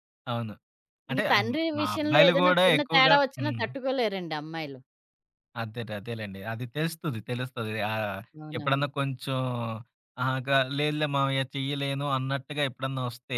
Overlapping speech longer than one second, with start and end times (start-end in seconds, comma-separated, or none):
1.1-3.6